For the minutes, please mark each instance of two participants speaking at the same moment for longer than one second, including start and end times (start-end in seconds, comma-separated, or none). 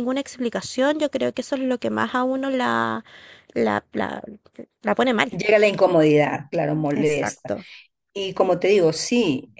none